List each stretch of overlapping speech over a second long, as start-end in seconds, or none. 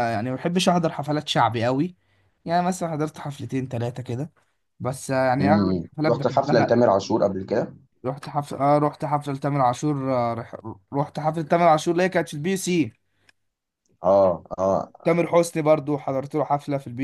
5.4-6.8